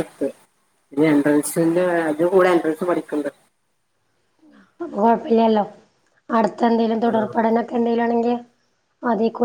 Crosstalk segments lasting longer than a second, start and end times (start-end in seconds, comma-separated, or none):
none